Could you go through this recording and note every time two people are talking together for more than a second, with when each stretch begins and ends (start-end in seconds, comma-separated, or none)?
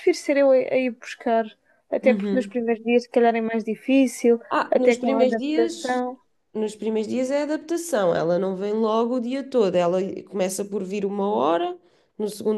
4.5-6.0